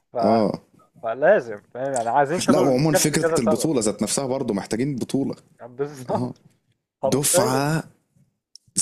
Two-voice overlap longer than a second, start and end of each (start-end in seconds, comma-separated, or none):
2.5-3.7